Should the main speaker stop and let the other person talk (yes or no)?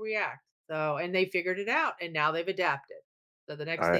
no